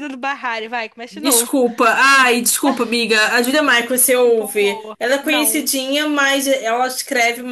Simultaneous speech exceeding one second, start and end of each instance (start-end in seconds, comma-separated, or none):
4.2-5.7